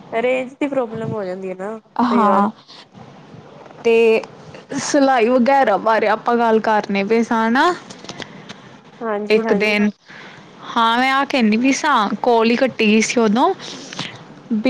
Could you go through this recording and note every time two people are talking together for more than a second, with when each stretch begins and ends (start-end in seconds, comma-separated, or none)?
none